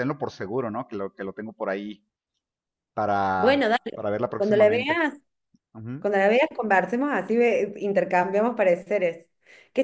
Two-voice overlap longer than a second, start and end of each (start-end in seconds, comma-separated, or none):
3.4-5.0